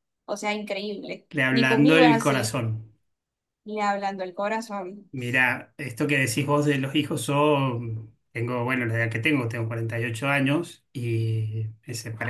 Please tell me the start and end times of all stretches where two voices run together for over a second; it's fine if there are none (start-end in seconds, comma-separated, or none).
1.3-2.6